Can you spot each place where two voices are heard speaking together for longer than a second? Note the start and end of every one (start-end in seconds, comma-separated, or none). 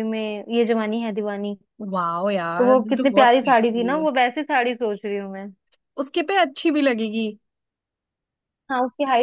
2.6-4.0